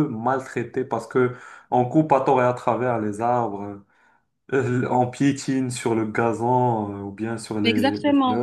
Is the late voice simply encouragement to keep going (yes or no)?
no